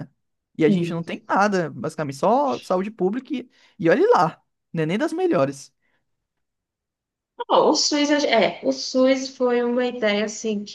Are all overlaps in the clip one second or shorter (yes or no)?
yes